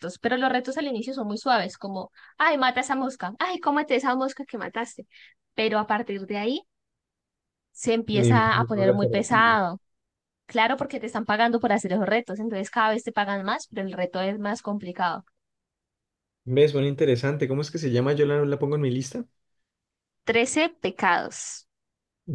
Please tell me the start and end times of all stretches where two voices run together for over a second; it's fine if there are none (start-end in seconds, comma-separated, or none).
8.1-9.6